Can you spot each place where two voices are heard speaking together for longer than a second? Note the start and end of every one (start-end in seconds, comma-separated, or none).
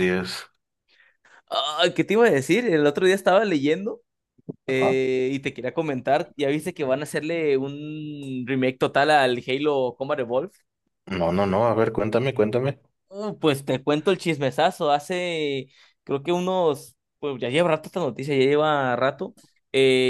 none